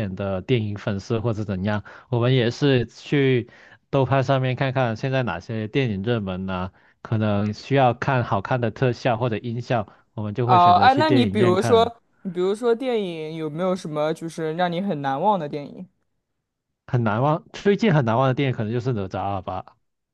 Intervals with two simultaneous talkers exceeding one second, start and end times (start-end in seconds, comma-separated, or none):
10.4-11.9